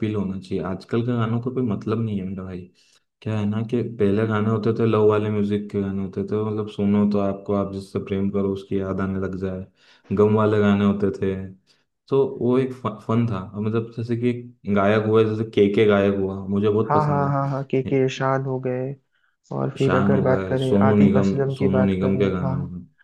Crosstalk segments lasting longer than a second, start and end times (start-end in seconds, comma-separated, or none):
19.8-22.5